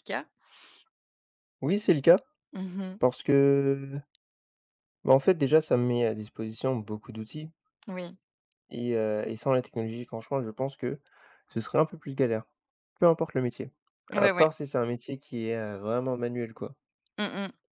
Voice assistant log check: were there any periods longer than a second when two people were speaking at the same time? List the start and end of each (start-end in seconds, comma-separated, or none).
none